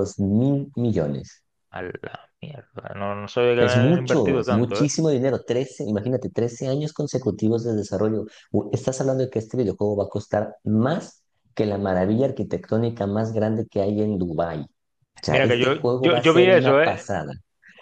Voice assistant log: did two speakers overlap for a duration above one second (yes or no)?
yes